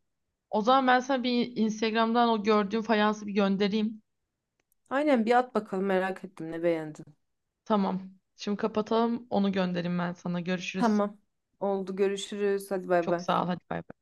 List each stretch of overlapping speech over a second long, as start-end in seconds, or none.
none